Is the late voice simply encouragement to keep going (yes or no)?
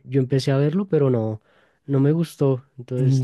no